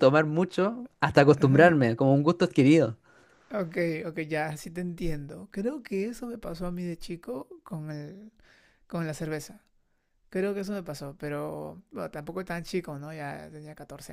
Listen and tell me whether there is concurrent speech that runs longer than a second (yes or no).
no